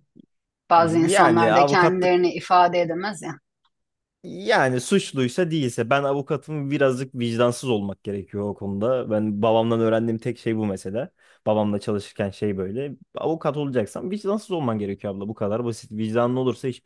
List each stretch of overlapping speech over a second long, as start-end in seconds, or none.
0.8-2.1